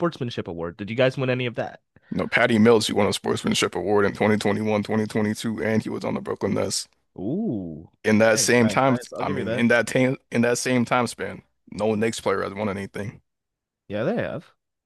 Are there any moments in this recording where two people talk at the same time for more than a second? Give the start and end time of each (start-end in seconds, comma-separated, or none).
8.0-9.7